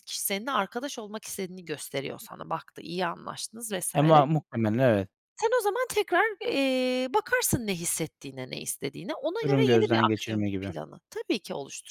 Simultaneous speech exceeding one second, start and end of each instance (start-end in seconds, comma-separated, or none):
9.4-10.7